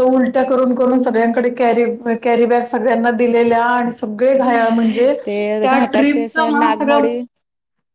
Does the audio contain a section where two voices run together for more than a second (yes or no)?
yes